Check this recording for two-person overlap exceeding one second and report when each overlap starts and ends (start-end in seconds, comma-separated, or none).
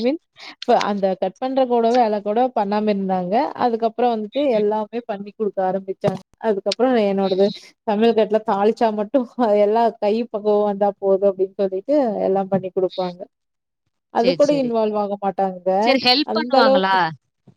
none